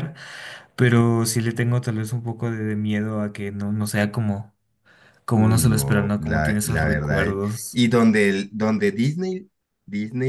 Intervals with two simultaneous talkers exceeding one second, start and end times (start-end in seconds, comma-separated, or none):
5.3-7.8